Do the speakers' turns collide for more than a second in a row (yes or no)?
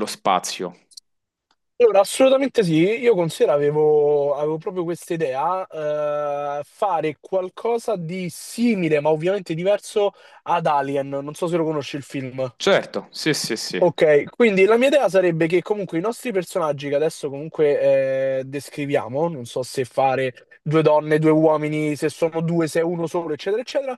no